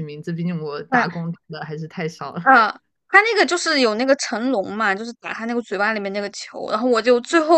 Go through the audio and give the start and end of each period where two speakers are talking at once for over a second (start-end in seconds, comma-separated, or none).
none